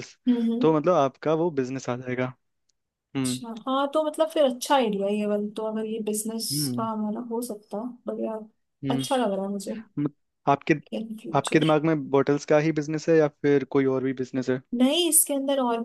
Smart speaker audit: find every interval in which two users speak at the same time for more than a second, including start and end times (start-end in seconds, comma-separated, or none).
none